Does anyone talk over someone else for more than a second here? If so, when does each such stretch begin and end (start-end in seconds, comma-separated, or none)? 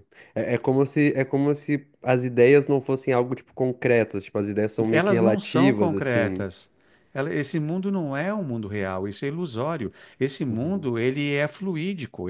4.9-6.5